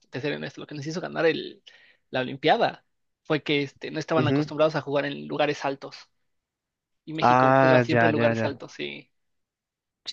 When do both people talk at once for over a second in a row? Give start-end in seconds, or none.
7.2-8.5